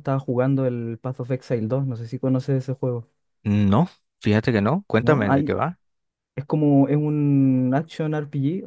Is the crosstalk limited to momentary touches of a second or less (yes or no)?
yes